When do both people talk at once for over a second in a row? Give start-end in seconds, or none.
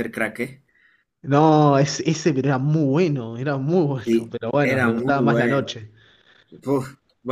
4.0-5.7